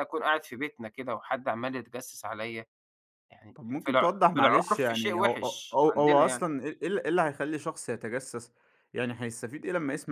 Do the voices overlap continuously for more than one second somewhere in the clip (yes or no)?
yes